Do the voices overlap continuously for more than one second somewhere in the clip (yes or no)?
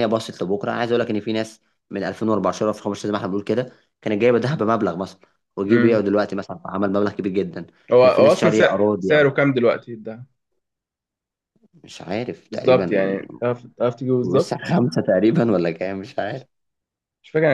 yes